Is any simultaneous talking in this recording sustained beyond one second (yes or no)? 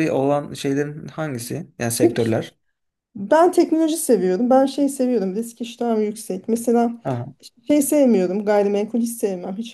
no